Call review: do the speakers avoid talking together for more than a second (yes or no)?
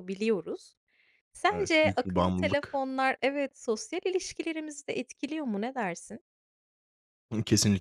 no